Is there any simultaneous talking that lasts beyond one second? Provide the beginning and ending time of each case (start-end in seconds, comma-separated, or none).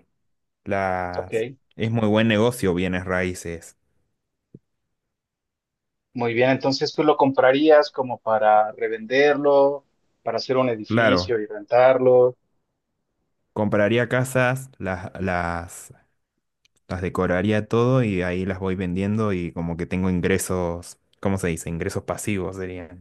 none